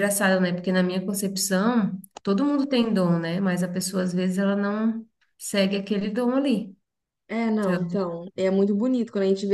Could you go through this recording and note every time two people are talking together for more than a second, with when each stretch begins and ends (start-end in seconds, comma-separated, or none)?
none